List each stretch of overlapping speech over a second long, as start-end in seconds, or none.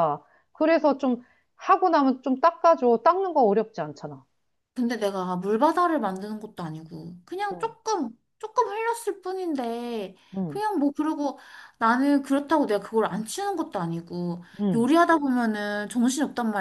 none